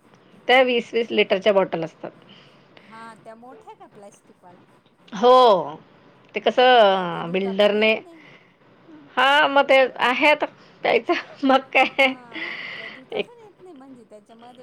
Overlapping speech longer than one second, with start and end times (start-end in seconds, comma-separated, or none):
6.4-7.9